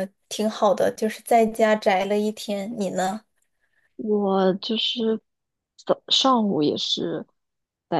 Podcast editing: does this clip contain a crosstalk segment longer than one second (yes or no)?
no